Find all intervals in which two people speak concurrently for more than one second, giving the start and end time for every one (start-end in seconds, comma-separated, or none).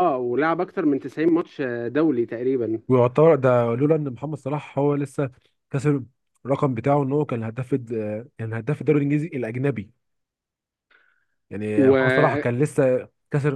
none